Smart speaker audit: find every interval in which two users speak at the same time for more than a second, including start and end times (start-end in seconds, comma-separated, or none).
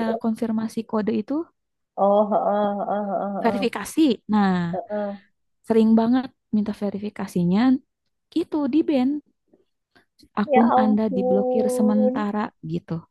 10.5-12.2